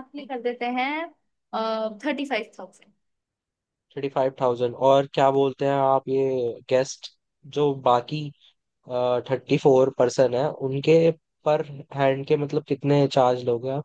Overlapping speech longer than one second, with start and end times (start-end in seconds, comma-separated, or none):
none